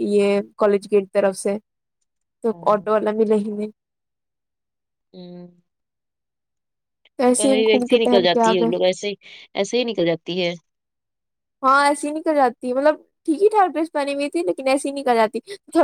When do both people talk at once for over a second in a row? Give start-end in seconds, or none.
7.4-8.7